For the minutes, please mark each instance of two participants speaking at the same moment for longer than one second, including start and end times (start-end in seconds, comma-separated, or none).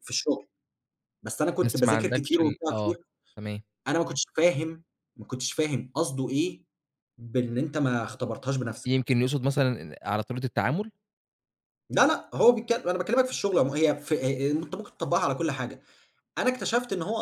1.6-3.0